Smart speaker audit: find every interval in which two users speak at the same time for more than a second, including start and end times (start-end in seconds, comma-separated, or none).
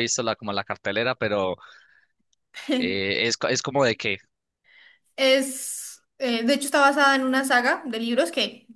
none